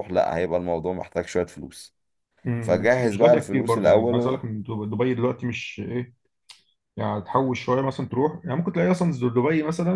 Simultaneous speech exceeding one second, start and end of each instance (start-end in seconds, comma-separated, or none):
2.6-4.4